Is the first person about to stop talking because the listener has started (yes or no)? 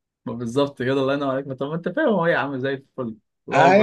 yes